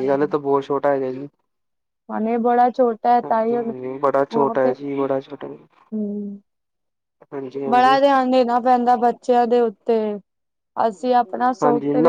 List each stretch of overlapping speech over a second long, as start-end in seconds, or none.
3.2-4.7